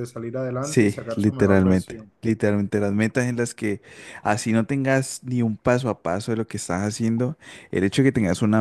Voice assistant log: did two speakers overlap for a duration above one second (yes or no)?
yes